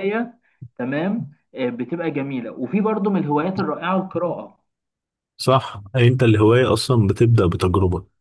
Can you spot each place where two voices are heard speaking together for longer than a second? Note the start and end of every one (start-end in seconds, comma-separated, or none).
none